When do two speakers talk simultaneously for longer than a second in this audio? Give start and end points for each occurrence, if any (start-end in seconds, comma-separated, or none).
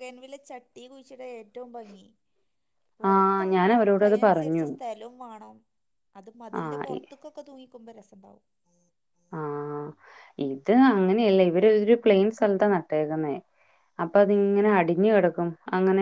3.1-4.7